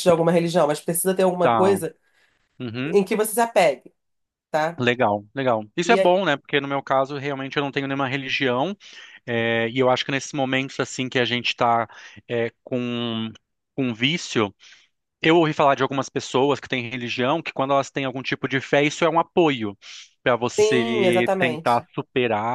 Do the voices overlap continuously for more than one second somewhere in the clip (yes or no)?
yes